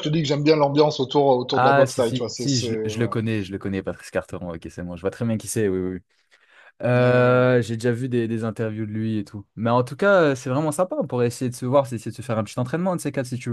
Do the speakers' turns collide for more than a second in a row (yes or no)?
yes